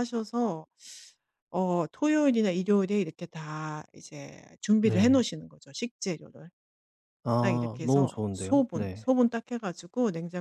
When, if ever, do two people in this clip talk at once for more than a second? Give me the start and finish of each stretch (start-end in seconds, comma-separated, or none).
7.4-9.1